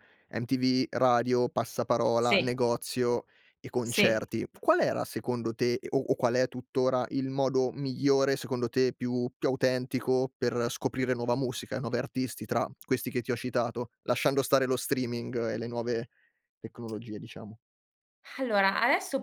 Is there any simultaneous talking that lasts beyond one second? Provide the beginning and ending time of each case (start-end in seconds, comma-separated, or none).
none